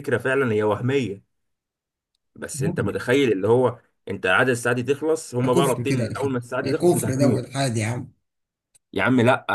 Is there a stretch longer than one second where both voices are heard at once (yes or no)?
yes